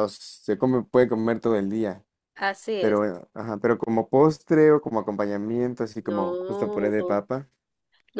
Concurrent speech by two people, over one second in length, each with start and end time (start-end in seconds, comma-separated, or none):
6.0-7.2